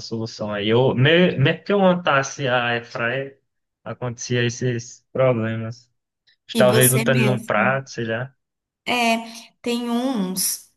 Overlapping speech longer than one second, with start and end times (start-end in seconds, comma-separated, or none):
6.6-7.8